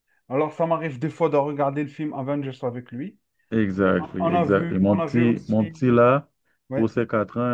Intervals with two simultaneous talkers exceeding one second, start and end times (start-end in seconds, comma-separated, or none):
4.0-5.6